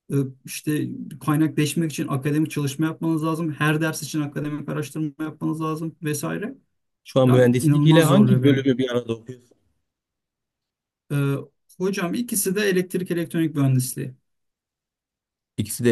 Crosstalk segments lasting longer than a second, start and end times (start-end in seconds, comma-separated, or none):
7.2-8.6